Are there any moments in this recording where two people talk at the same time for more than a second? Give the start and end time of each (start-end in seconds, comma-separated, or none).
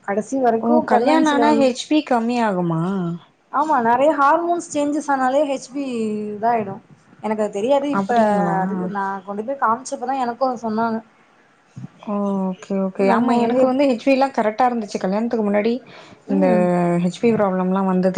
none